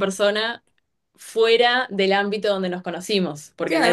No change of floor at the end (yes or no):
no